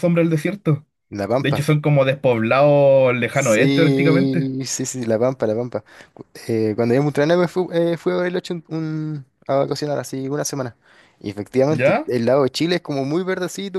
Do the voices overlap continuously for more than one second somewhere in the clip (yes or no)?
yes